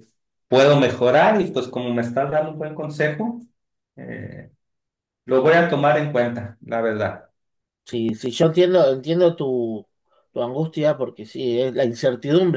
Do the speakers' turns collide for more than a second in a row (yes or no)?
no